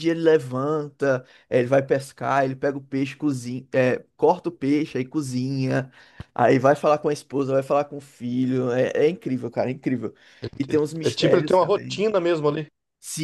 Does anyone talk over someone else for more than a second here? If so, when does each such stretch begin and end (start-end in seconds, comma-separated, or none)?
10.6-12.0